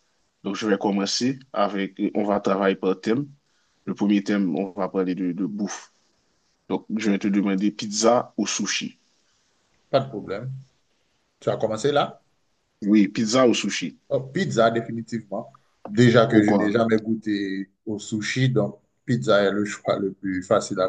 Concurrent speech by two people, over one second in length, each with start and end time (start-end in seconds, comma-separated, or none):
none